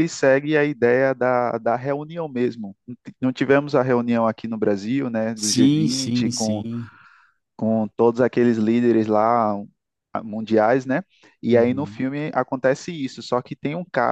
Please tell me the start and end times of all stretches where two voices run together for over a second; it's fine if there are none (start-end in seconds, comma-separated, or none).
5.3-6.7